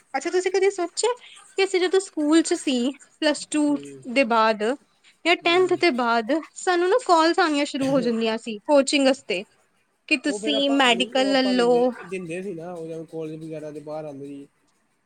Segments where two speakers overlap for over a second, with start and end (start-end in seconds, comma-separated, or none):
none